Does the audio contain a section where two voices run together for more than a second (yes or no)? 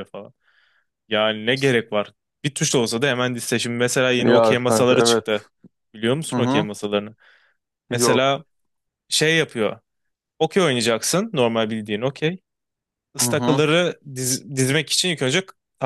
yes